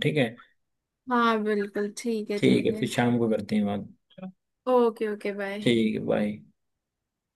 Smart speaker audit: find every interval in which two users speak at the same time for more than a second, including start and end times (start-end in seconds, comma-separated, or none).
none